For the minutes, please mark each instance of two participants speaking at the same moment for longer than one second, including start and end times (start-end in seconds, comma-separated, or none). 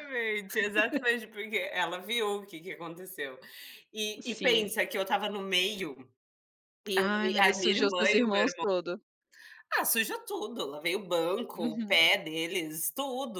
6.9-8.7